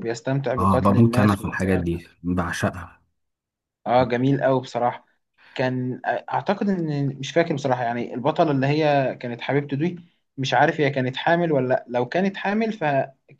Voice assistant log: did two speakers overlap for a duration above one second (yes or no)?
yes